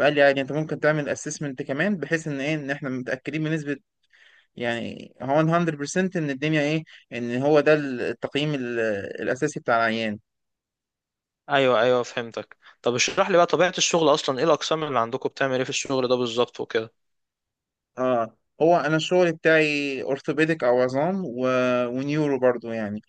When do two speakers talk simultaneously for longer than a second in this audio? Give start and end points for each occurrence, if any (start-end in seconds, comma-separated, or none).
none